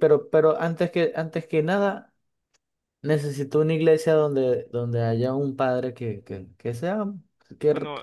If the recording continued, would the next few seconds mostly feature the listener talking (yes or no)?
no